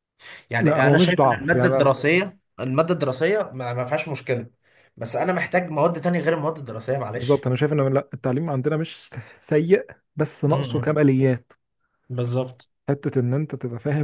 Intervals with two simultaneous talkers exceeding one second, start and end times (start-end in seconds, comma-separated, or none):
0.6-2.1